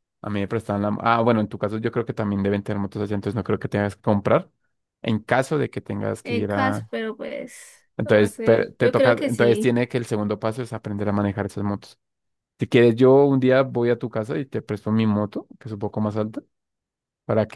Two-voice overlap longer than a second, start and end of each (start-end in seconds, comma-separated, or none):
8.0-9.8